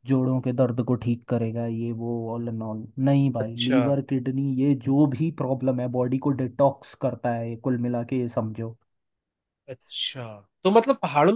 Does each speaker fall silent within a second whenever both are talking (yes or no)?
yes